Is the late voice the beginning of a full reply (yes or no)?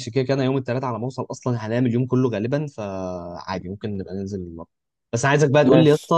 no